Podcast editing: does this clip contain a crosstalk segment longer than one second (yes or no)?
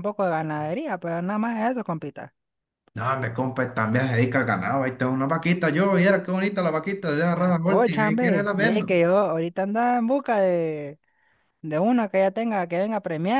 yes